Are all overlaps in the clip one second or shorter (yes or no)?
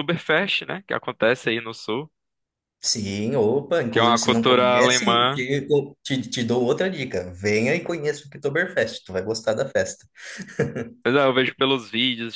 no